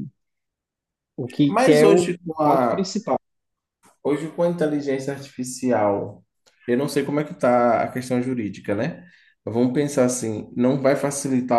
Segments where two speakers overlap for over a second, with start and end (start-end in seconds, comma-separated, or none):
1.5-2.9